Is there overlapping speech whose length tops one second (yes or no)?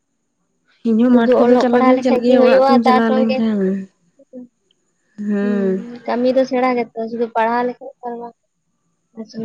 yes